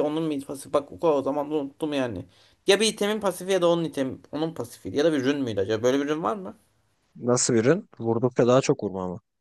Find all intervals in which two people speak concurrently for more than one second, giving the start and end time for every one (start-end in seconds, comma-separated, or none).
none